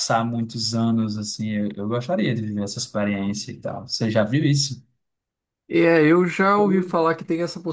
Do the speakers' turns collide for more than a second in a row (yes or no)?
no